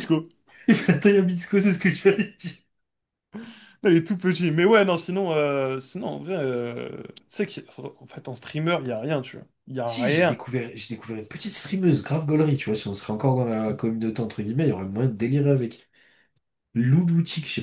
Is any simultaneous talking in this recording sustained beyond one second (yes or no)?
no